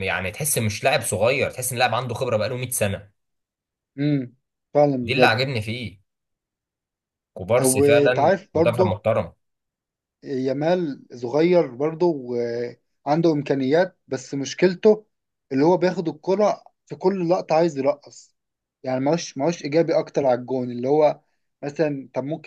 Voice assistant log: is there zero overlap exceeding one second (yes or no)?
no